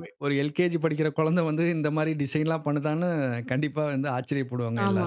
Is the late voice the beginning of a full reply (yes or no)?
yes